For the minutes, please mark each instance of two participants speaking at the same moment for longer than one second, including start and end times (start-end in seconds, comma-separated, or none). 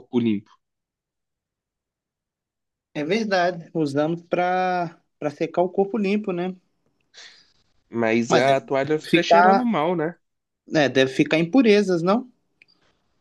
8.3-9.7